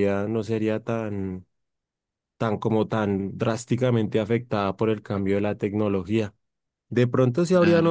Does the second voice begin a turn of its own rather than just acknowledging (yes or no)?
no